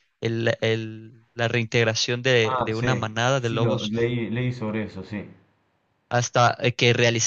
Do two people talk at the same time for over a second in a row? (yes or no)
yes